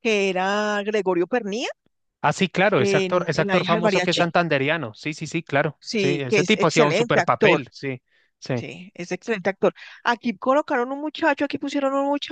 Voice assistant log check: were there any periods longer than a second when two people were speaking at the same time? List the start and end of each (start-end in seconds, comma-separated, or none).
2.8-4.3, 5.8-7.6